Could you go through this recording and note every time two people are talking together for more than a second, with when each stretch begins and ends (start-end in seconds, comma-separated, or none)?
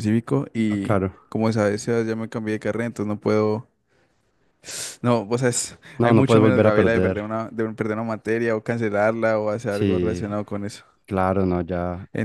6.0-7.2